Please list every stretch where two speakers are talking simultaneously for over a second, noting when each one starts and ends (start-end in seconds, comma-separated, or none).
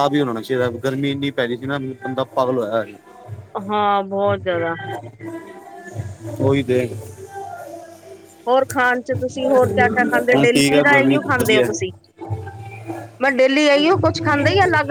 10.3-11.7